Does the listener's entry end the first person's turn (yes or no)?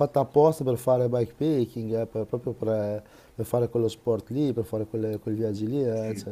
no